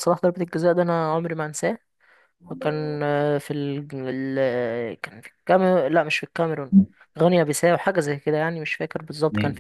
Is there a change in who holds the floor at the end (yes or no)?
yes